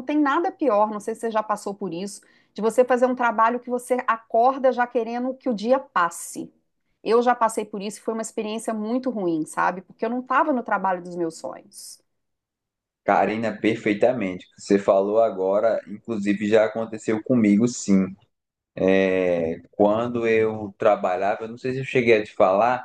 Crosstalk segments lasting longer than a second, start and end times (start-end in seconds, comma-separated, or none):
none